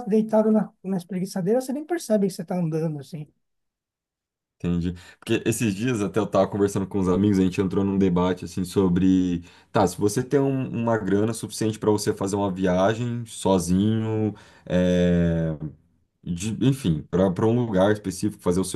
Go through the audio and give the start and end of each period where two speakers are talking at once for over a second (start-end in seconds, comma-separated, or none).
none